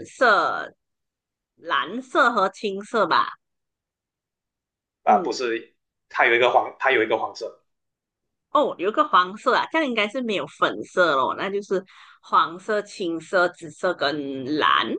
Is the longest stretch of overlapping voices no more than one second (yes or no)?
yes